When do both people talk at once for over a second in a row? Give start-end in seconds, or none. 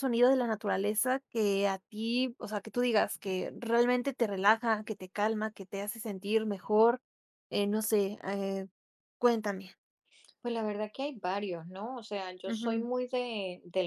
none